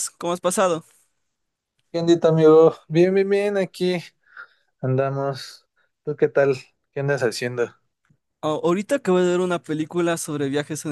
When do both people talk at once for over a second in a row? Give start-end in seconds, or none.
none